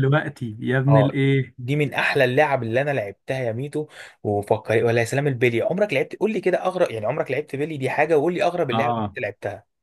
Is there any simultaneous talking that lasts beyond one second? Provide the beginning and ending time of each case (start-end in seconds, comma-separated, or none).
none